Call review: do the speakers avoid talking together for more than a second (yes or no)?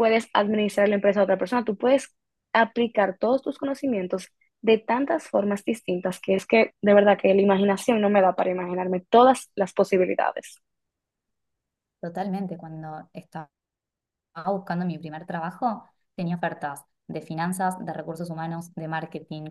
yes